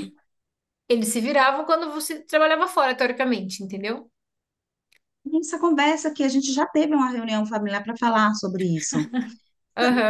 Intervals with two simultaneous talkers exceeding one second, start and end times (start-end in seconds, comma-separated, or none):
none